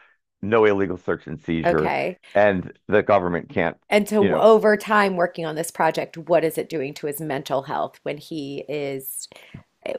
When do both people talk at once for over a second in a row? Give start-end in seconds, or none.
none